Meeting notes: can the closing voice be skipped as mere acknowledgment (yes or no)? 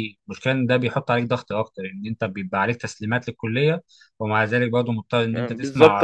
no